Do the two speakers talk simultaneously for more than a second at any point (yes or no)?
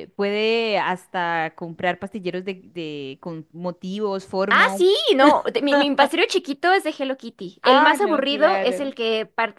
yes